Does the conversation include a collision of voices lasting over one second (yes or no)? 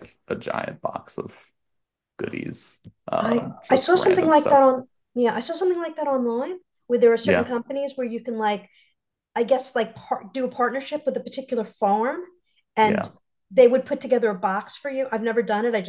yes